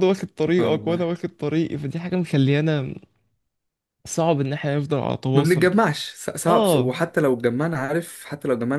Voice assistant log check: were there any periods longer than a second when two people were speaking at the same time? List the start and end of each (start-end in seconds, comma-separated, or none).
none